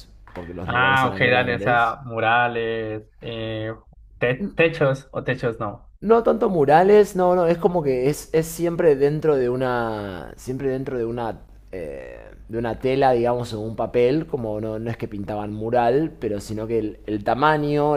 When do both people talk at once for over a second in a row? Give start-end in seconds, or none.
0.6-2.0